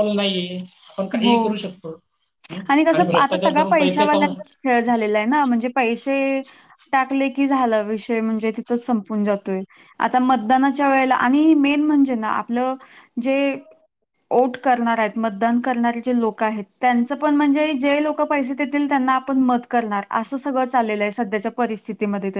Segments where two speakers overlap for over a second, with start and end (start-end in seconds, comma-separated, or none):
2.9-4.3